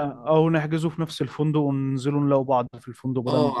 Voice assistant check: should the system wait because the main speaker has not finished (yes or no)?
no